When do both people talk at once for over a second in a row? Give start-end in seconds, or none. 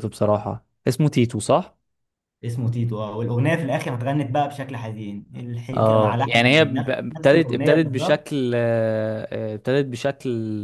5.8-8.2